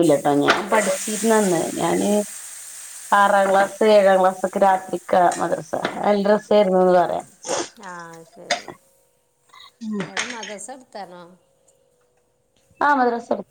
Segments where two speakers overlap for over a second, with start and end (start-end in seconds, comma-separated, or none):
none